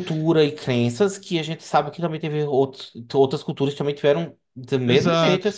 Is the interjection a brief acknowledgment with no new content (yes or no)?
no